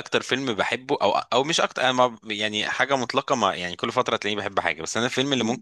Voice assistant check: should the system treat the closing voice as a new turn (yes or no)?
no